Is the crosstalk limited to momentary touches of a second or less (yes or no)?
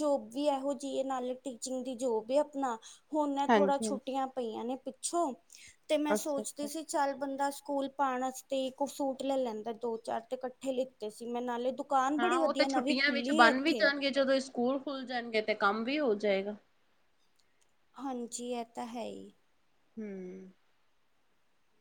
yes